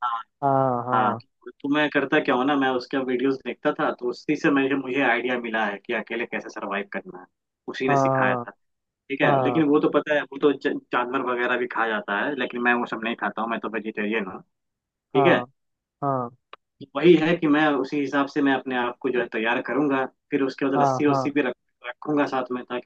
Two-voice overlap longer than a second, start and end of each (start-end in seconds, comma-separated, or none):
none